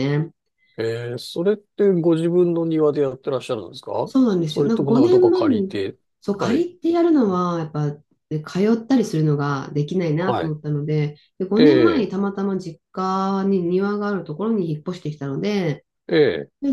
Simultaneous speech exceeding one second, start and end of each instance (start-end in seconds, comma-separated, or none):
4.3-5.8